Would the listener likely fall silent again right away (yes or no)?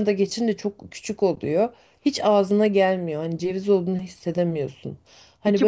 yes